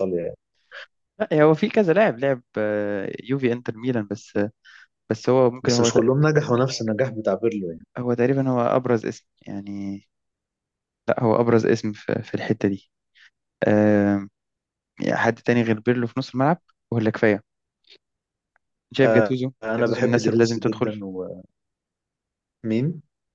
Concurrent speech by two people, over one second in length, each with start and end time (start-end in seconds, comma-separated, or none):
19.0-20.9